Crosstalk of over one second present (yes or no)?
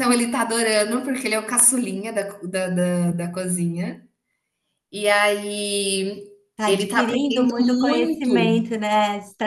yes